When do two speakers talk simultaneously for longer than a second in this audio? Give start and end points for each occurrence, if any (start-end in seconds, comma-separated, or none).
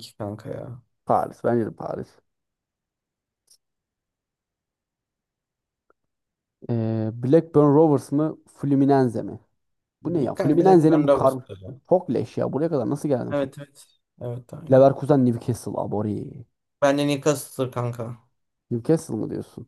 10.1-11.3